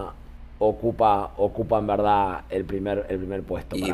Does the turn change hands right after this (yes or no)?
yes